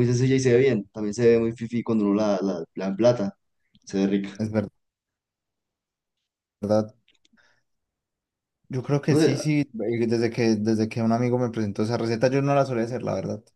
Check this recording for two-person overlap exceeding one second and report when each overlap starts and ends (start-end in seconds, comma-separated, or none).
none